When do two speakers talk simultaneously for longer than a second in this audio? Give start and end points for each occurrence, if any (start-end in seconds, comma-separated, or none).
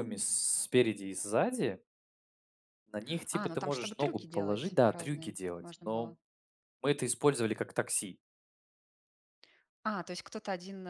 3.3-6.2